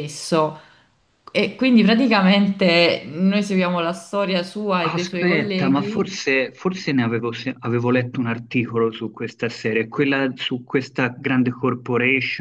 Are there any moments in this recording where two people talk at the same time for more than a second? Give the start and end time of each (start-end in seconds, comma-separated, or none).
4.8-6.2